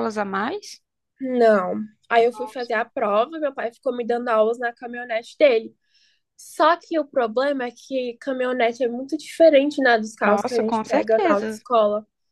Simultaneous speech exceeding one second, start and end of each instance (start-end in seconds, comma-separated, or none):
10.2-11.6